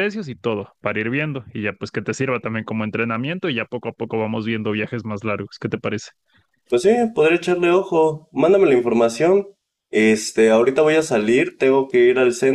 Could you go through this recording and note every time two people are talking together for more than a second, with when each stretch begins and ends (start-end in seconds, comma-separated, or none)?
none